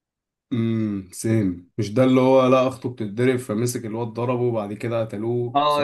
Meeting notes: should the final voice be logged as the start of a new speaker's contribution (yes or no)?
yes